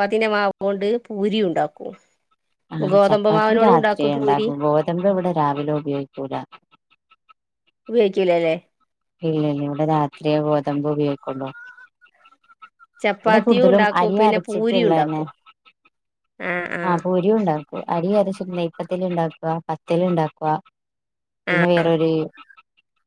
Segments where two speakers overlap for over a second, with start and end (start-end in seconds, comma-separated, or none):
2.9-4.5, 13.2-15.2